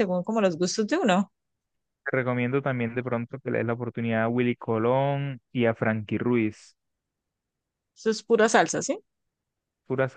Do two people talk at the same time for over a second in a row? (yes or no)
no